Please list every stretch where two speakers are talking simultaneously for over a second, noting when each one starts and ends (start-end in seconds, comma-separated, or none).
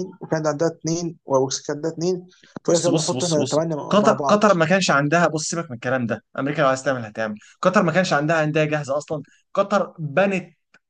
2.7-4.5